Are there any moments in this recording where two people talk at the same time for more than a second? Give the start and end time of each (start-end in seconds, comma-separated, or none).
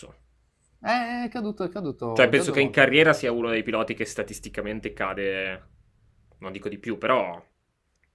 2.1-3.5